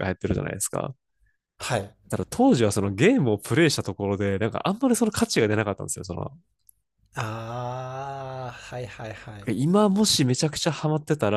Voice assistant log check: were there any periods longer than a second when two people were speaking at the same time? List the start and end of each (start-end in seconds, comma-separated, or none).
none